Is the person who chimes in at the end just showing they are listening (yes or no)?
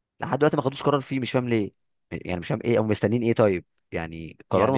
no